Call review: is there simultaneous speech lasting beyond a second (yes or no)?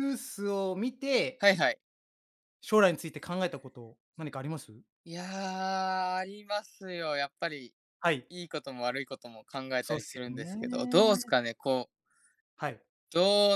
yes